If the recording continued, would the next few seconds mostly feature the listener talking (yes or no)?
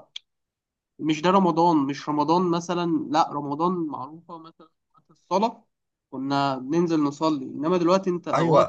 yes